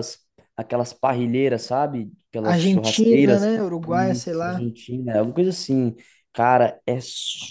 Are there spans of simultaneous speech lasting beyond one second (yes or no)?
yes